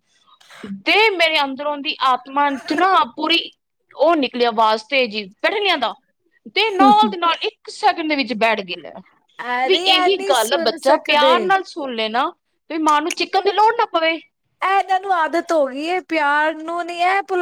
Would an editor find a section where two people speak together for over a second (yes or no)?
yes